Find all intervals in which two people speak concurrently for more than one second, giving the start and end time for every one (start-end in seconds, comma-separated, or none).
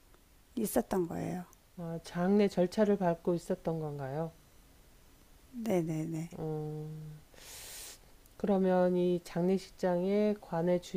none